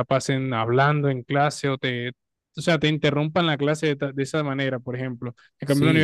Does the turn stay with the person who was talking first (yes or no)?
yes